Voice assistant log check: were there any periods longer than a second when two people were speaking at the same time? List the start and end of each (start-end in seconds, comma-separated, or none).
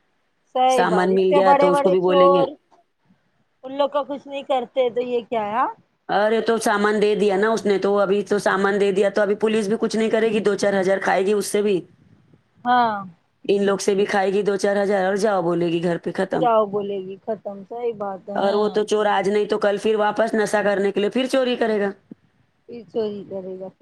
0.8-2.5